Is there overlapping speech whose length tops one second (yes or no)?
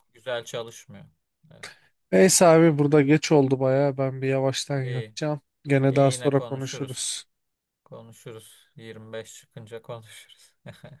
yes